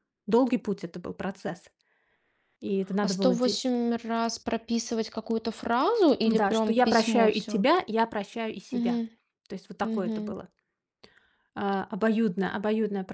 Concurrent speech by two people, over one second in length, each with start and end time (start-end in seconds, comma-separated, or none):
6.2-7.6